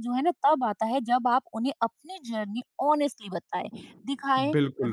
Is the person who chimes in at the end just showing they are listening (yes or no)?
yes